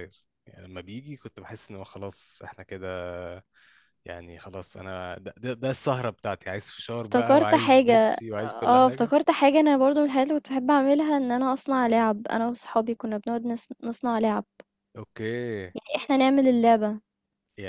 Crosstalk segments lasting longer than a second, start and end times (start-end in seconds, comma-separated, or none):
7.0-9.1